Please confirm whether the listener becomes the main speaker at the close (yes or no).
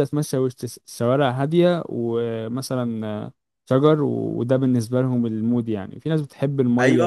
yes